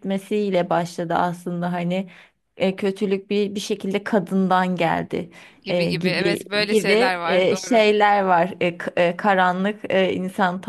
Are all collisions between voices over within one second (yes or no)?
no